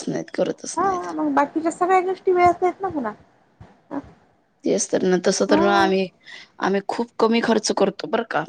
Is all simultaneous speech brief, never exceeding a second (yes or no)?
yes